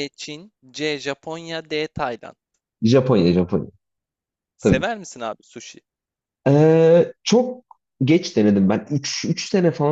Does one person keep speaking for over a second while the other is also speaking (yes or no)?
no